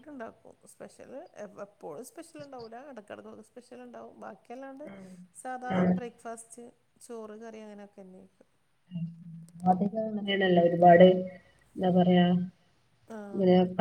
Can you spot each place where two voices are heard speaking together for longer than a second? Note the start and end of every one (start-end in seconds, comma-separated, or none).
none